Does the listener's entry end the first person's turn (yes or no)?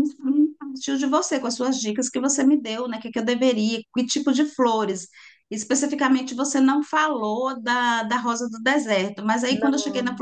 no